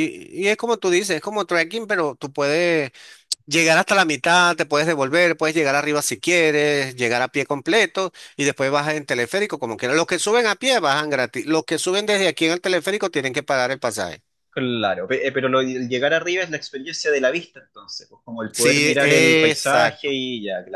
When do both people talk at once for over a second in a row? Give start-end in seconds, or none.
18.5-20.1